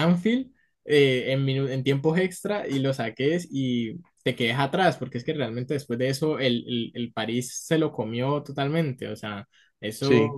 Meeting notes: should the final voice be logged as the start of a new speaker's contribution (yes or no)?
no